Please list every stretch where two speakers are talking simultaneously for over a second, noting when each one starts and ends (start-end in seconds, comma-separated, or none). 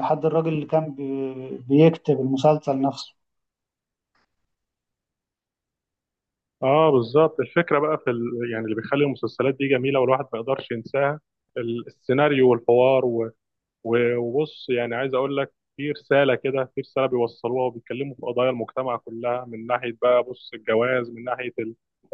none